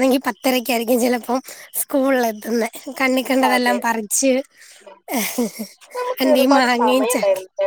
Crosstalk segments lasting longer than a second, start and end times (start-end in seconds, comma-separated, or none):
none